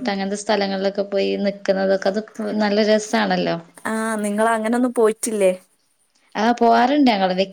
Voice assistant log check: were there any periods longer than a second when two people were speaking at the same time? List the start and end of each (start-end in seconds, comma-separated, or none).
none